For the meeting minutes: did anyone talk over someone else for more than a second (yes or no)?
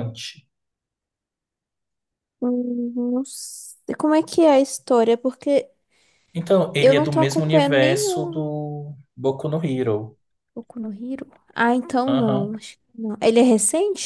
yes